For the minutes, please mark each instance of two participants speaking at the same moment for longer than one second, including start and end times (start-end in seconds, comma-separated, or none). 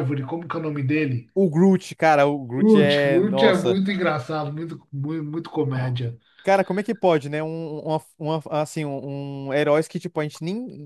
2.6-3.8